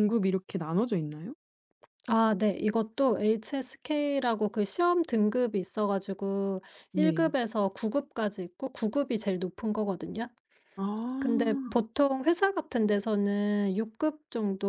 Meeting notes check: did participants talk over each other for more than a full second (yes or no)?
no